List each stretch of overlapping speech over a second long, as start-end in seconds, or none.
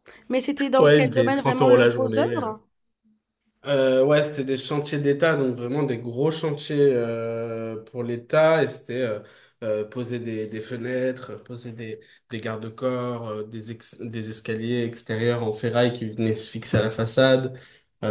0.8-2.6